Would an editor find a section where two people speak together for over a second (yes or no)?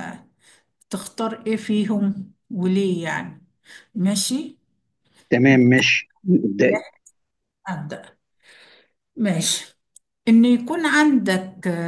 no